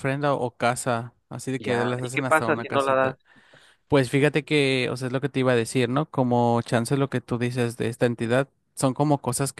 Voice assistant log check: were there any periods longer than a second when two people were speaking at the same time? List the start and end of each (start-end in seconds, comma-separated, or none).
1.6-3.1